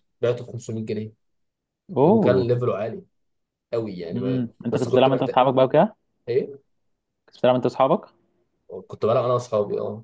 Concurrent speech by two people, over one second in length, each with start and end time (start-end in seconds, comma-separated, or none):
4.1-5.4